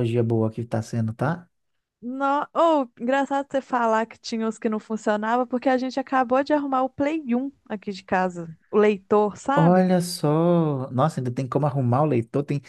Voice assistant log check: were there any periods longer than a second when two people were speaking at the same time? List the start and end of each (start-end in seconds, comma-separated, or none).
none